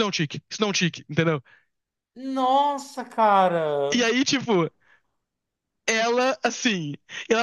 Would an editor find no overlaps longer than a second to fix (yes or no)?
yes